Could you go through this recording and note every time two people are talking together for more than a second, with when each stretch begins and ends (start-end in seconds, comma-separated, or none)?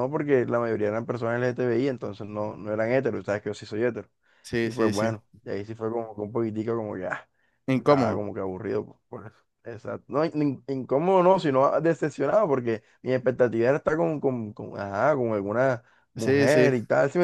none